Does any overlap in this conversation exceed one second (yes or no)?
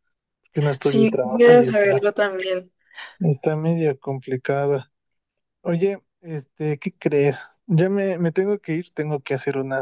yes